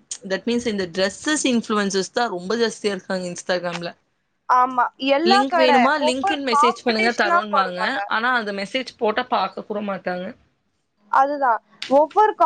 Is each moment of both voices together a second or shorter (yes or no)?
no